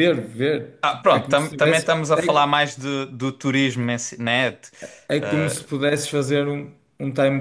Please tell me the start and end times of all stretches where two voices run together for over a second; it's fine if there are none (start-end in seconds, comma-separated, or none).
0.8-2.5